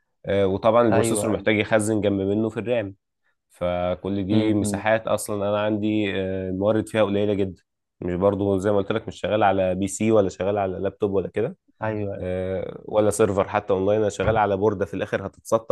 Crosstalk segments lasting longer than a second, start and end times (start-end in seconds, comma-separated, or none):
none